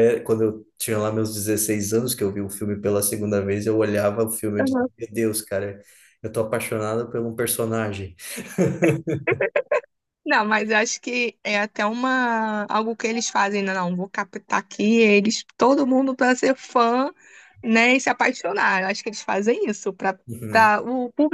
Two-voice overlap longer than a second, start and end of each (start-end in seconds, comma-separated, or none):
none